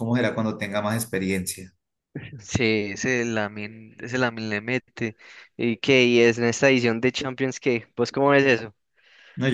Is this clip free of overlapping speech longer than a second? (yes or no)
yes